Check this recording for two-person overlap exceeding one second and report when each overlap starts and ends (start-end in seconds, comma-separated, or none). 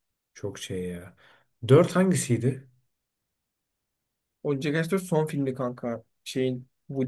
none